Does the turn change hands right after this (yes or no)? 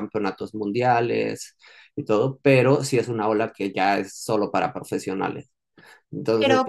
no